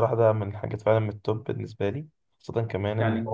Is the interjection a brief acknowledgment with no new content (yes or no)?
yes